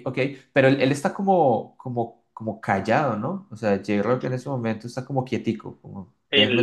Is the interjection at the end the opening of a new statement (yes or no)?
yes